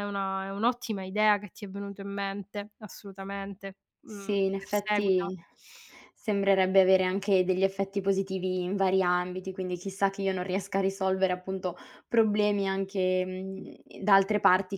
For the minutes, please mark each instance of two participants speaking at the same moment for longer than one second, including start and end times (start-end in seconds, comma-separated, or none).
4.0-5.3